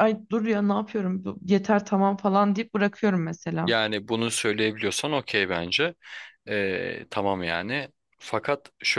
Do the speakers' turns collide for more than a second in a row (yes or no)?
no